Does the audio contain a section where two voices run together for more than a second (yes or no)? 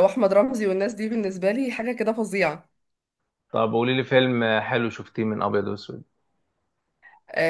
no